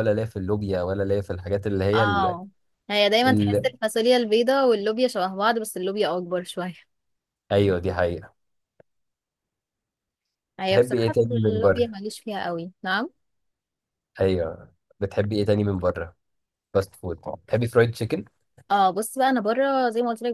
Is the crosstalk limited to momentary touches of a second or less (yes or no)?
no